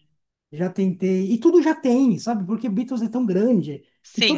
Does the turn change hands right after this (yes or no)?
no